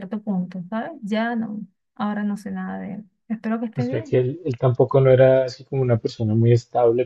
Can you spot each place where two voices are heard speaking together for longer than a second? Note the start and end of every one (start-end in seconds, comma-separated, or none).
none